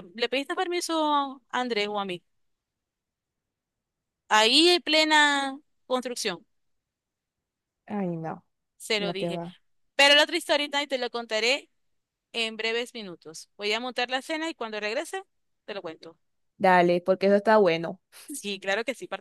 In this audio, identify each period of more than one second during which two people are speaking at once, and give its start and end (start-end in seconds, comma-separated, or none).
none